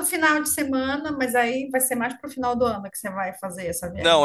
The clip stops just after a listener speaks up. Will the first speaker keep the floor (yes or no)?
no